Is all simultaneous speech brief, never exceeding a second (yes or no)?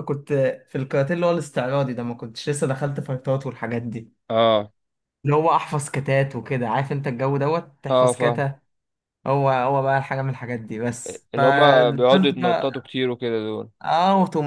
no